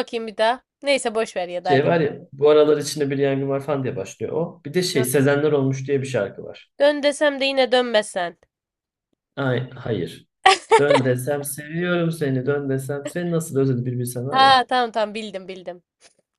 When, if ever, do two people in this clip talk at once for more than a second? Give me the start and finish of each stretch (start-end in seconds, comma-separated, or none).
none